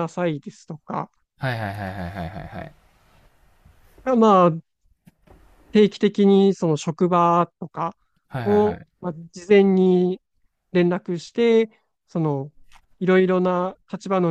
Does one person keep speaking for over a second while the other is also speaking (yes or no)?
no